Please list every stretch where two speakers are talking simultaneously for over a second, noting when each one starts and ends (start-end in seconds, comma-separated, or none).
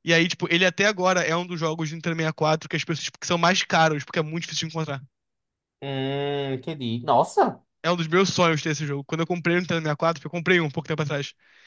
none